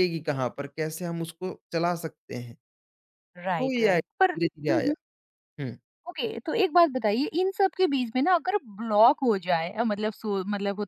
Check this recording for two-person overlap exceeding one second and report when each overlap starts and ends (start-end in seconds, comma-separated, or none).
3.6-4.9